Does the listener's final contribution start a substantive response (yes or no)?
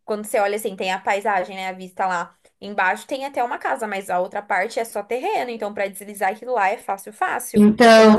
yes